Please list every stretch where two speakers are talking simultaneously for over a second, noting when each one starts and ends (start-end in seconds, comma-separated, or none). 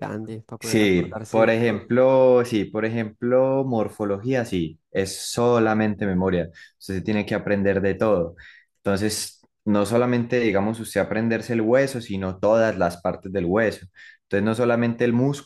0.6-1.9